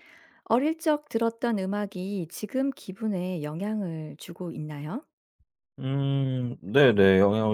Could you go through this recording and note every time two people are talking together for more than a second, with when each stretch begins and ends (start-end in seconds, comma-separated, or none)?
none